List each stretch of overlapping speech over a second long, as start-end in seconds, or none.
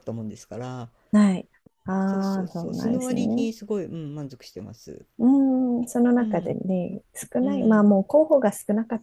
2.0-3.5